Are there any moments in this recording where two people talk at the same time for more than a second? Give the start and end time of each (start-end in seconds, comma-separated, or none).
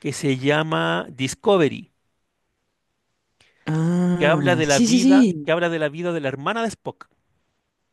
4.2-5.5